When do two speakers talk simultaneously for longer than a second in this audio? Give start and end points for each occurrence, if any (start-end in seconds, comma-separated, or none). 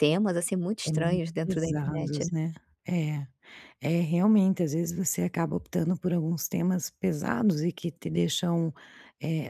0.9-2.3